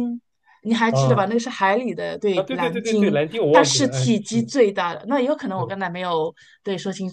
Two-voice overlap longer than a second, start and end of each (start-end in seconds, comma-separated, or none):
2.3-4.5